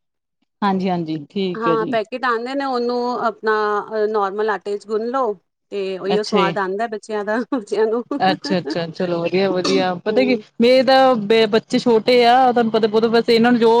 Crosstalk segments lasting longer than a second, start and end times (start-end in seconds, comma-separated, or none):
none